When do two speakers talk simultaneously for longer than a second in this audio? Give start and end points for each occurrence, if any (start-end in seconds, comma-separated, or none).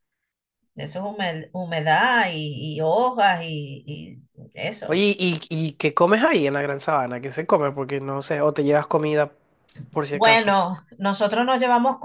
none